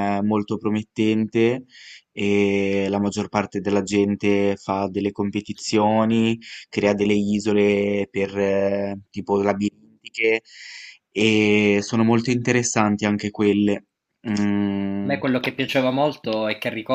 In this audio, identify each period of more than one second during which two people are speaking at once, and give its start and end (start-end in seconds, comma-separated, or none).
none